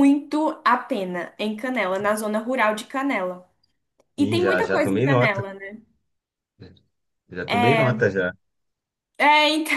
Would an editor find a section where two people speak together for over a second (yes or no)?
yes